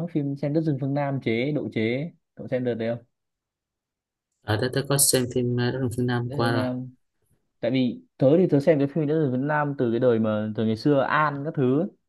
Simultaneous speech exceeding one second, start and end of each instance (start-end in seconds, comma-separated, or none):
none